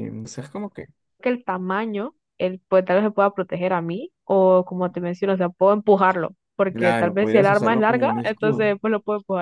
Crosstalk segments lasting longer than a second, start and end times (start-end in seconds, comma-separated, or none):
6.7-8.8